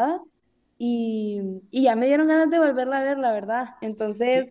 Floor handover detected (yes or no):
yes